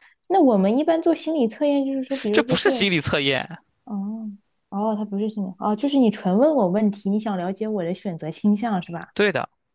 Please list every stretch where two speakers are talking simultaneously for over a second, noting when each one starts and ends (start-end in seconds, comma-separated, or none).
none